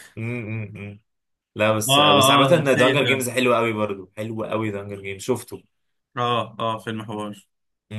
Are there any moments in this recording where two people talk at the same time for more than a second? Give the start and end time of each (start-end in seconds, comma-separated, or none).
1.9-3.3